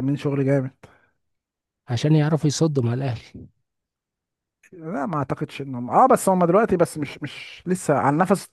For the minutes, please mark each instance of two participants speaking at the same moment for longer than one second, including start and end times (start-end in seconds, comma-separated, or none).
none